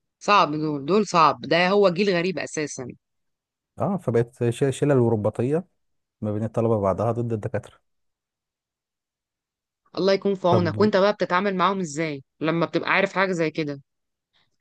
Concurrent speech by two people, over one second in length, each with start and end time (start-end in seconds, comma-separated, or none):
none